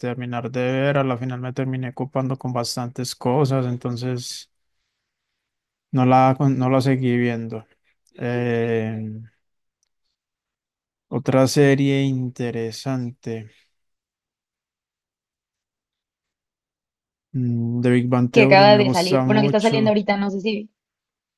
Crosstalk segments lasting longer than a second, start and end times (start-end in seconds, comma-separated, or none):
18.3-19.9